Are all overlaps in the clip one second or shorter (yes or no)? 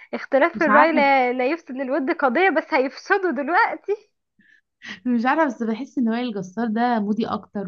yes